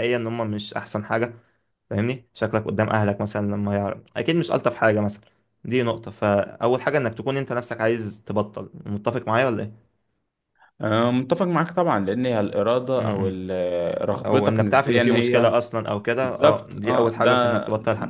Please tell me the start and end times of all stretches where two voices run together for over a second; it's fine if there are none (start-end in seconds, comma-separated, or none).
14.2-15.5, 16.2-17.6